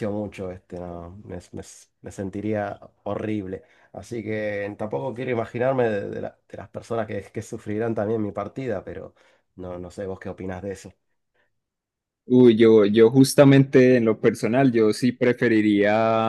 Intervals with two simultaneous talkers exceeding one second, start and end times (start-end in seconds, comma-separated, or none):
none